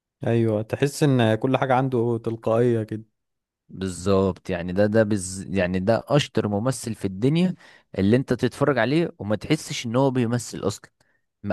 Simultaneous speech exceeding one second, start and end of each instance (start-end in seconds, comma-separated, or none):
none